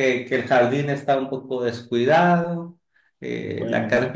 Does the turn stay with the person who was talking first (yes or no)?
yes